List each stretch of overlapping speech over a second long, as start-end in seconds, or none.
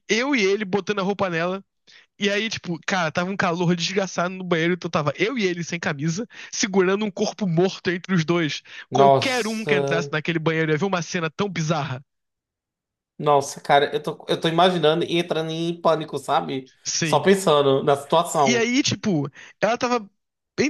8.9-10.1